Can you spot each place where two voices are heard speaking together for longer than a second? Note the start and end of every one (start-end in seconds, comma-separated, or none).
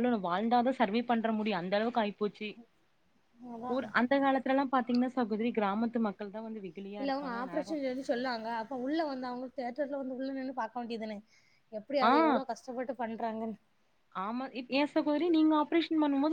none